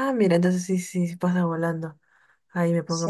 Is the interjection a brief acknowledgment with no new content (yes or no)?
yes